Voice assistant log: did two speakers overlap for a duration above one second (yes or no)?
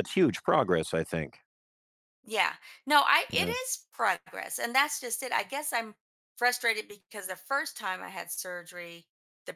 no